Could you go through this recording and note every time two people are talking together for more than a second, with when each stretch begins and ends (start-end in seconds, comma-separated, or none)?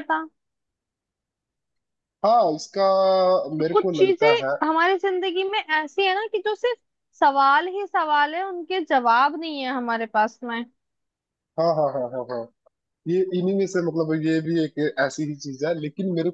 none